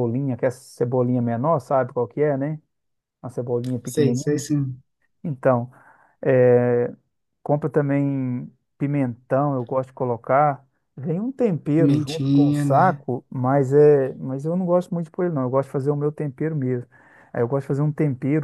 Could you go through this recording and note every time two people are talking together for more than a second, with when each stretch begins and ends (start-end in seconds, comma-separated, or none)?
11.7-13.0